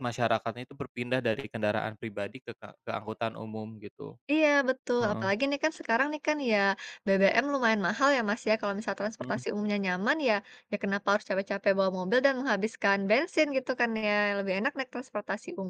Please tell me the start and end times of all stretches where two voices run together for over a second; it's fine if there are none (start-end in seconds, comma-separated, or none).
none